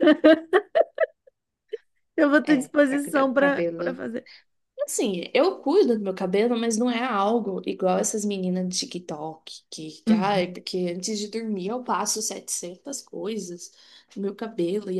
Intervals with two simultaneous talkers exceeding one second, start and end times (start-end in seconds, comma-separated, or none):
2.4-3.9